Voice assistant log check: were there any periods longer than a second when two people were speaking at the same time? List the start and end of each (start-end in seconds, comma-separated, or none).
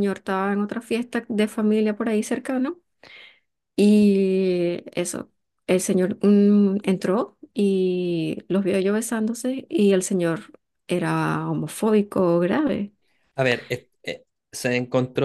none